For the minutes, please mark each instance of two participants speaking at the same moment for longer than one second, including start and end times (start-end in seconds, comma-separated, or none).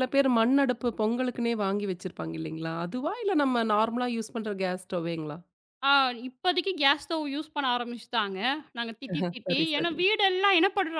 none